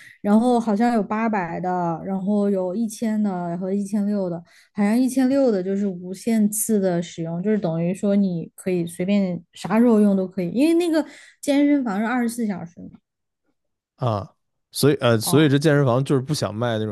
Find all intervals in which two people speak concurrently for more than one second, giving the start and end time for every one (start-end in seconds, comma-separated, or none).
none